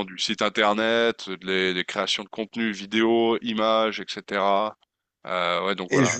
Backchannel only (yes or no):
yes